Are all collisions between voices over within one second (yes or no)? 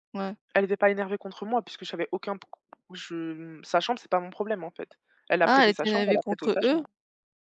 no